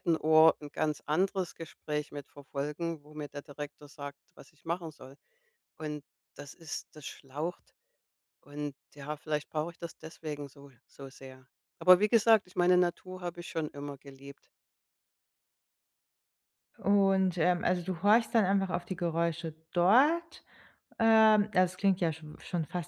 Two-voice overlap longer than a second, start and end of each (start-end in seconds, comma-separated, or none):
none